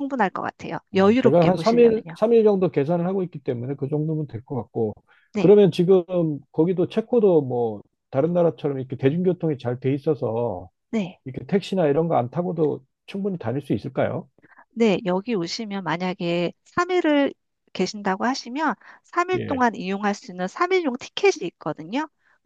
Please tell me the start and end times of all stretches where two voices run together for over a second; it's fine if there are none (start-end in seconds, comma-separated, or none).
0.9-2.1